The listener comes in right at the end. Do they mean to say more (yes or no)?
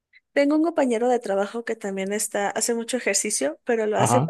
no